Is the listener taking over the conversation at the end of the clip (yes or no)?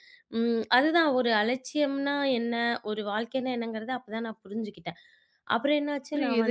yes